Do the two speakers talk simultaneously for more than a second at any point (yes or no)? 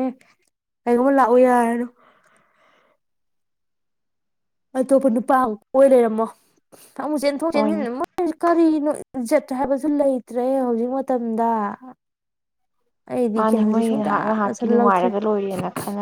yes